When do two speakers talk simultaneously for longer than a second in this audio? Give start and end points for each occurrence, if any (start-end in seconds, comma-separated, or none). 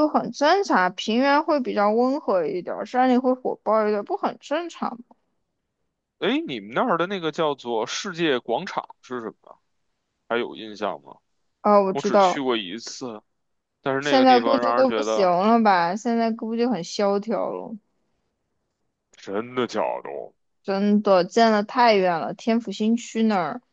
14.0-15.3